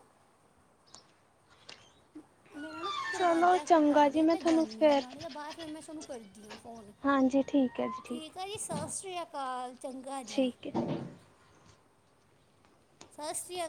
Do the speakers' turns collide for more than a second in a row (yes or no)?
yes